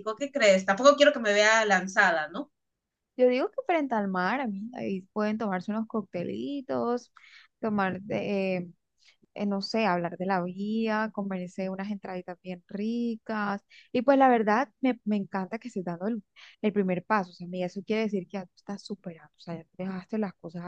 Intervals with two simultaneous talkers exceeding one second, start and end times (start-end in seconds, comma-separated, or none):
none